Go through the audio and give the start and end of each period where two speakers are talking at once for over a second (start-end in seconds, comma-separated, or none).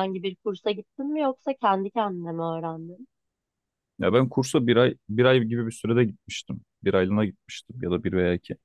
none